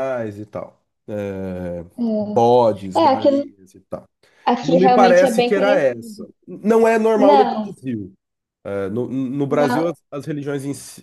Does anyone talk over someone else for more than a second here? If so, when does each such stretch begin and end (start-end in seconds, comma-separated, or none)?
4.6-5.8